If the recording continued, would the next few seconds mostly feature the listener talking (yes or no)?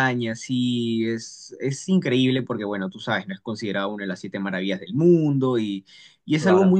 no